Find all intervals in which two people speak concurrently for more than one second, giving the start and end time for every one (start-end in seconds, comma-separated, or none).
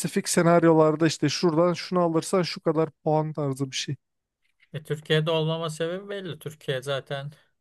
none